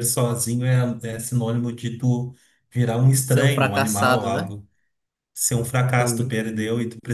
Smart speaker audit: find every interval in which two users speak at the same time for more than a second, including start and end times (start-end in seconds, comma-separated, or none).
3.3-4.5